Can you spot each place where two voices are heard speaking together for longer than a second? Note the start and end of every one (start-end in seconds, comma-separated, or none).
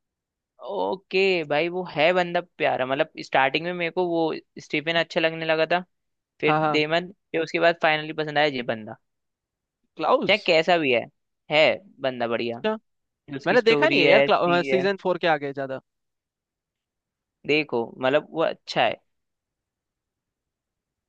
13.4-14.8